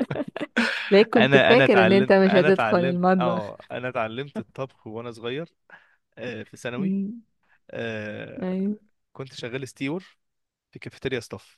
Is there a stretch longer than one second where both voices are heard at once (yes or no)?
yes